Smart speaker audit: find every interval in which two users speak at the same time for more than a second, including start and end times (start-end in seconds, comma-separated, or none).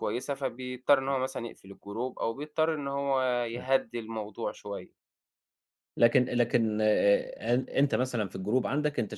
none